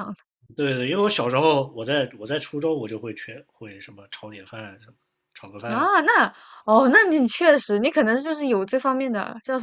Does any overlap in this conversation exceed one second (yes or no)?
no